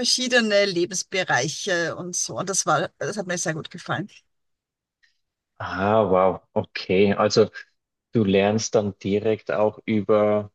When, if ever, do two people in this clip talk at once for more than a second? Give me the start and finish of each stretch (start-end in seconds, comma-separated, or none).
none